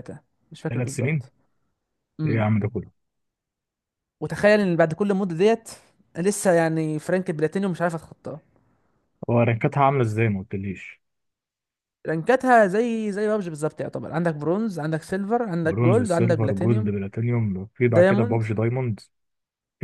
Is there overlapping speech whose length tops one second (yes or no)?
yes